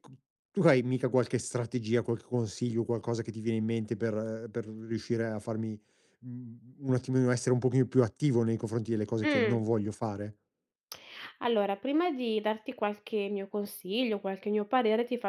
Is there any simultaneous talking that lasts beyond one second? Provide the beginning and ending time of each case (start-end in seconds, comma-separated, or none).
none